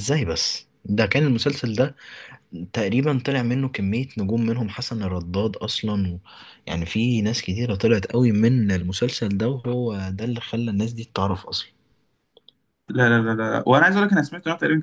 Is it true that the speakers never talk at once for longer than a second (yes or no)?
yes